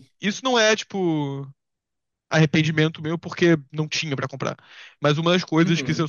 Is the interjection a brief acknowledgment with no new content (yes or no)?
yes